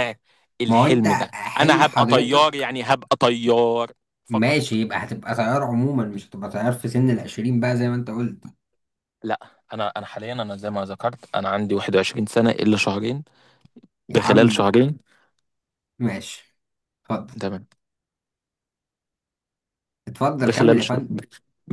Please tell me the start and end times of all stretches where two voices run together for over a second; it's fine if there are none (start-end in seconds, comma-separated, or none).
0.7-2.7